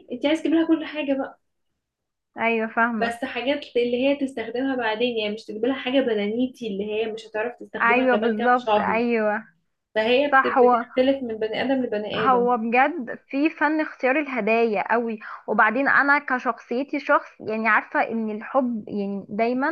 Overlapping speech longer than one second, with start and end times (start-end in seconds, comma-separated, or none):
7.8-9.1